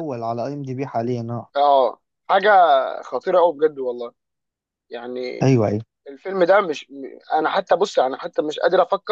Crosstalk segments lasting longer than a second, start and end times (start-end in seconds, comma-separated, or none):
none